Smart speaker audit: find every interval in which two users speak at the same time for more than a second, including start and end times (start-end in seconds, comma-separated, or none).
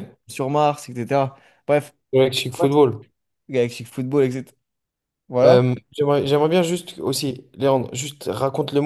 none